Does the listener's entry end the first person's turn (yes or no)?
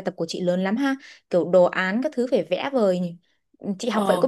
yes